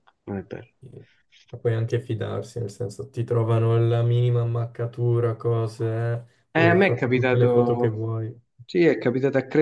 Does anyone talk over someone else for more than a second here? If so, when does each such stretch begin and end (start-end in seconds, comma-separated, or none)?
6.5-8.1